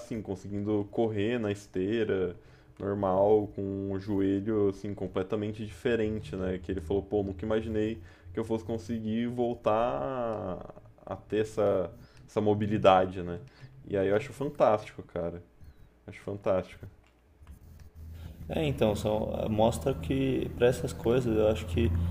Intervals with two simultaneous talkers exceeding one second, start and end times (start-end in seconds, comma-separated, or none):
none